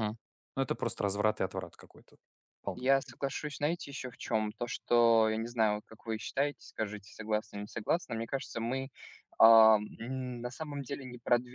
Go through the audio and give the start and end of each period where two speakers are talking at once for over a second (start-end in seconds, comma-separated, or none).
none